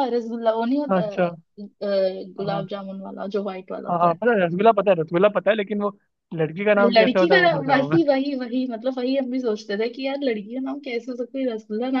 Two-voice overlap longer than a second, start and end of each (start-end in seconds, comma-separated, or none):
6.8-8.0